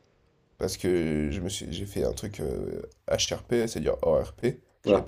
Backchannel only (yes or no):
yes